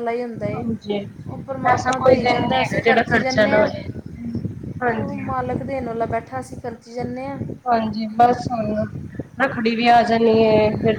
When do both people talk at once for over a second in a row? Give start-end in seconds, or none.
1.7-3.7